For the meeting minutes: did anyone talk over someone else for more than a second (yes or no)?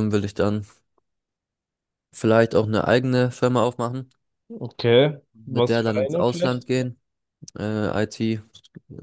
yes